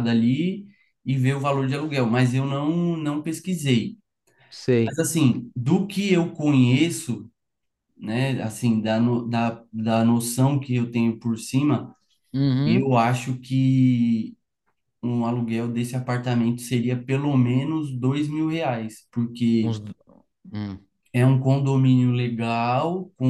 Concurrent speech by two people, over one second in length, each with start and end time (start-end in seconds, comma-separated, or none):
none